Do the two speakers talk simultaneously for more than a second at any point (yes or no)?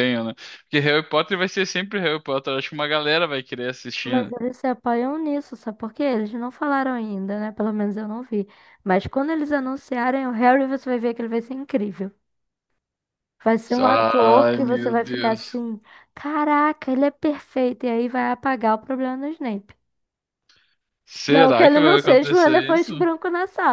yes